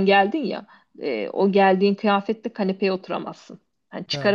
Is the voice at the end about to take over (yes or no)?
no